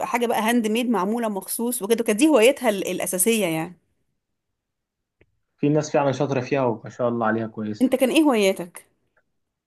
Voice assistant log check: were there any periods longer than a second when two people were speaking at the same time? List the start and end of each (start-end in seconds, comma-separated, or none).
none